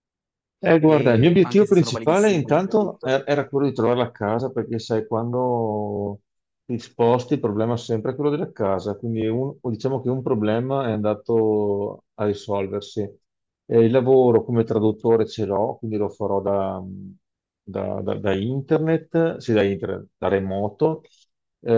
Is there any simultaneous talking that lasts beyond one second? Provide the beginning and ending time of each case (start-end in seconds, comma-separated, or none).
0.8-3.1